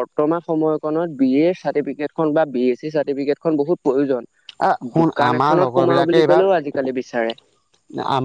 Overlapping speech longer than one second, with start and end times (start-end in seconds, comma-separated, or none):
4.7-6.6